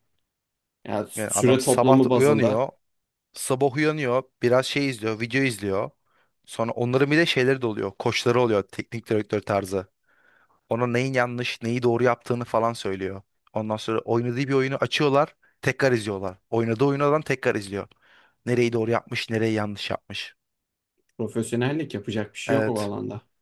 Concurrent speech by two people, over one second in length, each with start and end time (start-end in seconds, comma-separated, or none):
1.1-2.7